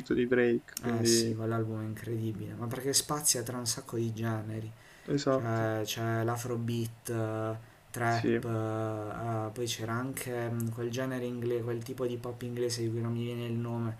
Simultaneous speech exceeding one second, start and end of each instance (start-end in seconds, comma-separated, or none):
none